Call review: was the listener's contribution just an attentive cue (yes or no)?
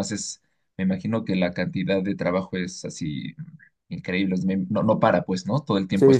no